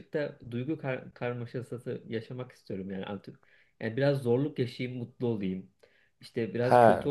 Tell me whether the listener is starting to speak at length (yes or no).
no